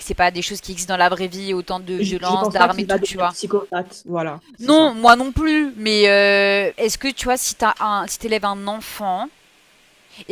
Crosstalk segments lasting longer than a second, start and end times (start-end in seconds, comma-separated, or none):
2.0-3.3